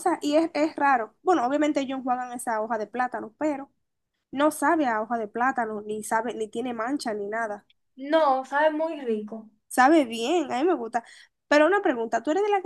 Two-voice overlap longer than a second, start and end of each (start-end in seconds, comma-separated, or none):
none